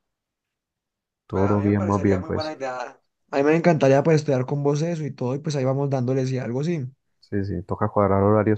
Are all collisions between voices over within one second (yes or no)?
no